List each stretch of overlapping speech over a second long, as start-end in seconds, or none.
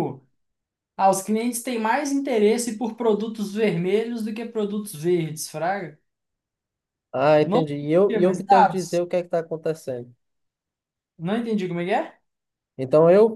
7.4-9.0